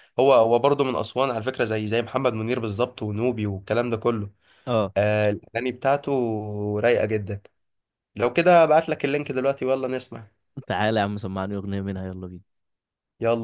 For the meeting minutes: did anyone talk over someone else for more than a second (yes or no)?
no